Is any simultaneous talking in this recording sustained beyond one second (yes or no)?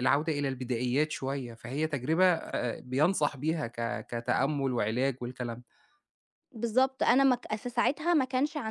no